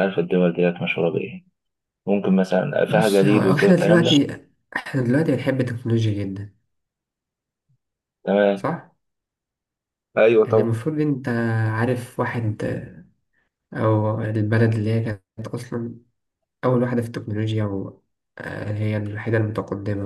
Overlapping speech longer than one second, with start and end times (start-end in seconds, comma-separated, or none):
2.9-4.1